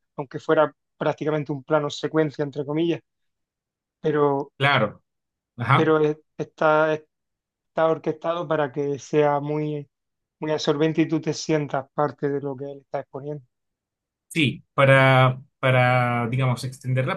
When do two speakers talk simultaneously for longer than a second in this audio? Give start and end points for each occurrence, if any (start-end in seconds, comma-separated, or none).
none